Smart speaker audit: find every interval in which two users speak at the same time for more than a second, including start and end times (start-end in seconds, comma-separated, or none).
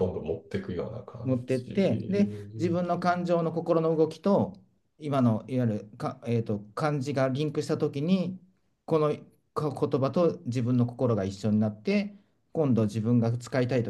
1.2-2.8